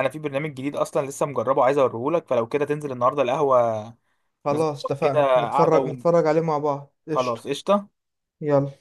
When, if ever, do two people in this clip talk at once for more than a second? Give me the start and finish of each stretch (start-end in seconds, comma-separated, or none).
4.5-5.9